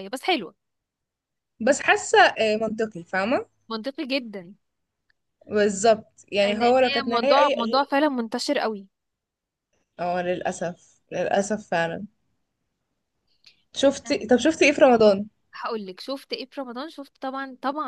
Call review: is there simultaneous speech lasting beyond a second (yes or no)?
yes